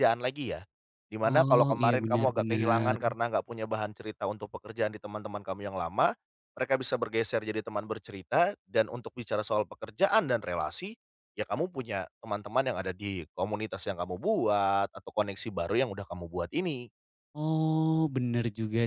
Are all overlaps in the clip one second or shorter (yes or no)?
no